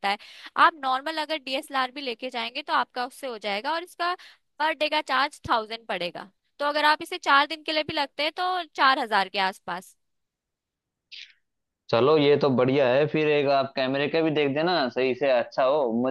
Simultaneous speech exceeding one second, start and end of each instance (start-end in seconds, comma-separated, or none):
none